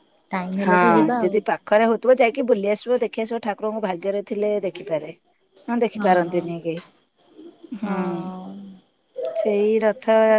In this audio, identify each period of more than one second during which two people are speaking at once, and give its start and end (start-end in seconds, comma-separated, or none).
none